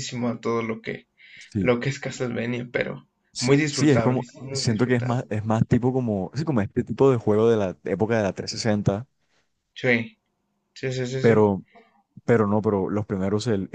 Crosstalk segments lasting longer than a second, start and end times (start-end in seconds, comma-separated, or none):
3.3-5.2